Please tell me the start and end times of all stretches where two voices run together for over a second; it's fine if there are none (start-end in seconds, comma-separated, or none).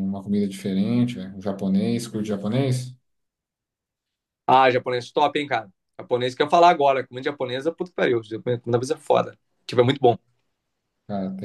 none